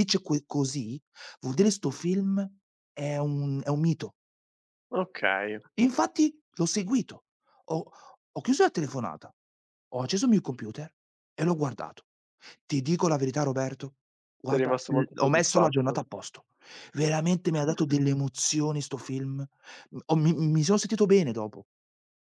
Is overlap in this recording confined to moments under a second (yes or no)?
no